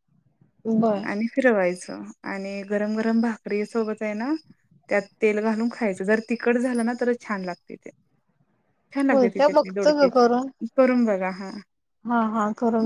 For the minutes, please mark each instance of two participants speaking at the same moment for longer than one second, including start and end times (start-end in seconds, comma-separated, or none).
9.1-10.5